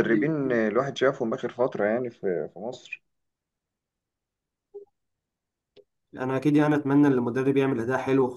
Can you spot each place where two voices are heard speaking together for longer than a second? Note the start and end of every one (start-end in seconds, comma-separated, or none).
none